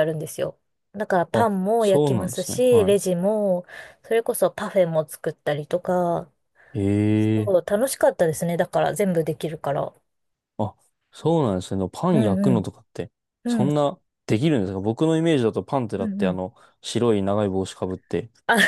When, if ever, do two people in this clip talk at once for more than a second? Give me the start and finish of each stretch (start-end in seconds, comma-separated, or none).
1.3-3.0